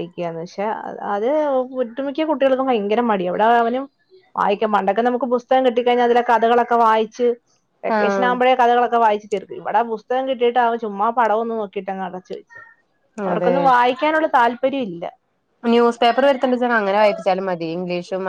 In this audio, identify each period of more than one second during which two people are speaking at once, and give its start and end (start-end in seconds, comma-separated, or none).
none